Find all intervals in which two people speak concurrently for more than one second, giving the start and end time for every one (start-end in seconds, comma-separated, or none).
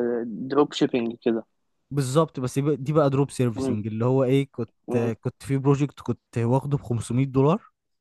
none